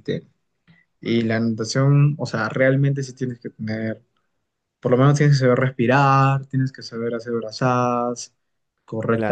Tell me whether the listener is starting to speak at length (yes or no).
yes